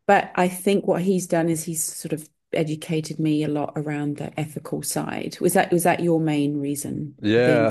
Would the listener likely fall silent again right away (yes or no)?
no